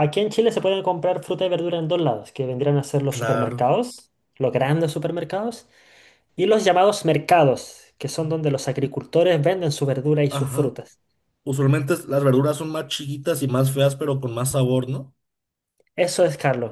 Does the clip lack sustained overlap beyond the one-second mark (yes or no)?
yes